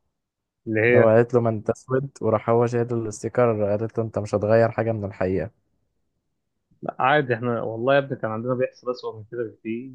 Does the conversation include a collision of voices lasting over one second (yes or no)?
no